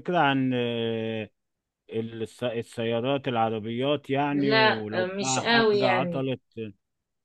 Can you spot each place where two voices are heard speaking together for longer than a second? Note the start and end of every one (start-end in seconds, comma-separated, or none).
4.3-6.3